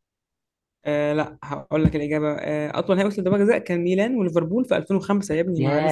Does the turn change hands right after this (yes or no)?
yes